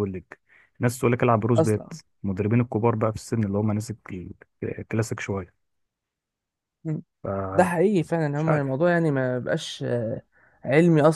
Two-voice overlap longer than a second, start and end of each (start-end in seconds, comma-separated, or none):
none